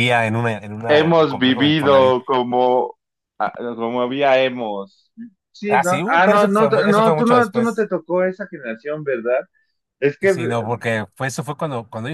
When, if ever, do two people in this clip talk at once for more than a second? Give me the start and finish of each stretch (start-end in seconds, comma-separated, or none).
0.9-2.2, 5.7-7.9